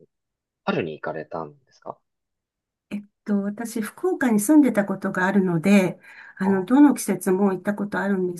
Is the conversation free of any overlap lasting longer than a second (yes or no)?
yes